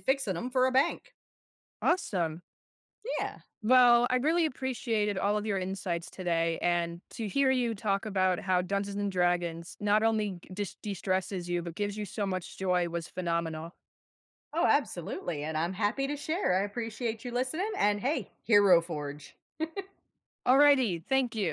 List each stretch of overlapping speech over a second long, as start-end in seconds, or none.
none